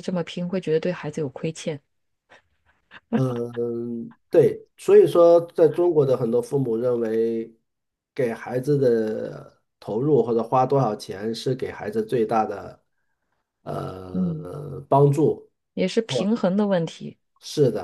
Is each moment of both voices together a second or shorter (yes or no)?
yes